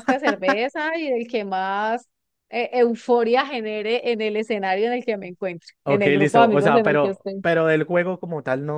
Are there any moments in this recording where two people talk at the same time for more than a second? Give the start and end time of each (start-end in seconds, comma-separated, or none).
5.8-7.4